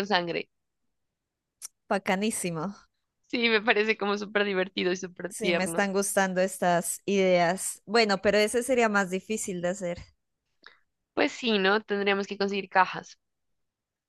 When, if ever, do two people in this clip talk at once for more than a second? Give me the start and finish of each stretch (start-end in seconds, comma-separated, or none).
none